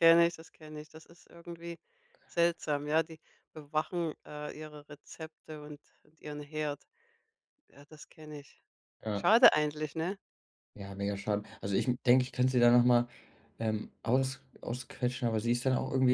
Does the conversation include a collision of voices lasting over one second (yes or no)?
no